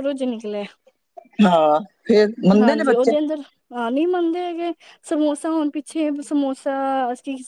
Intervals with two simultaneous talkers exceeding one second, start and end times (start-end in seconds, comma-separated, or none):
none